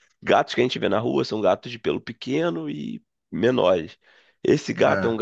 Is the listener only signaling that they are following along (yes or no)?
yes